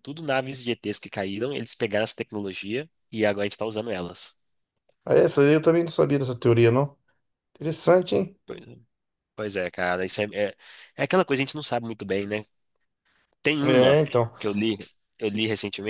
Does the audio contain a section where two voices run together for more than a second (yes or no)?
no